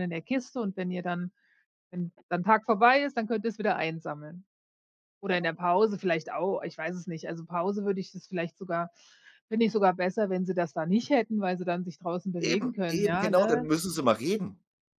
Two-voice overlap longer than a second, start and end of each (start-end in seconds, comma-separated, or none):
12.4-13.7